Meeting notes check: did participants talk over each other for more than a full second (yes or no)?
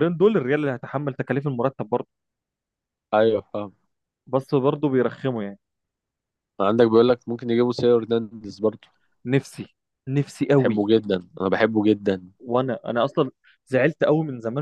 no